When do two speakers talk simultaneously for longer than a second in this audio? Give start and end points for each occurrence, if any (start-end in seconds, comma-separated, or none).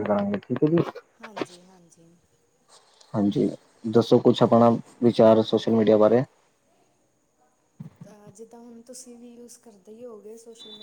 none